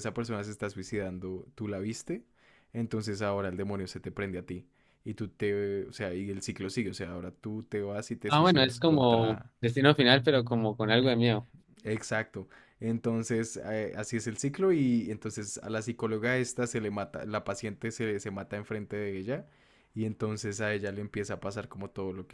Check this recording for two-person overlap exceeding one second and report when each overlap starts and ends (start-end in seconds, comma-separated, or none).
8.3-9.5